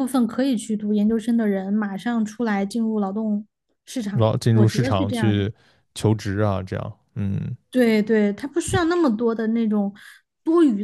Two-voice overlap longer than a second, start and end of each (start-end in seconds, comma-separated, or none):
4.1-5.5